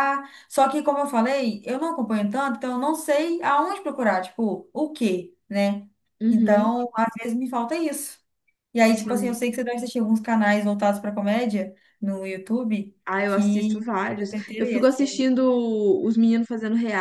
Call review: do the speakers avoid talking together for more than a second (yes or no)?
no